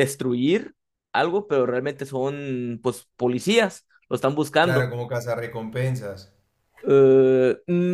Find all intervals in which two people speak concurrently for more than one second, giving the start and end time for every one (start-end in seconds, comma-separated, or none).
none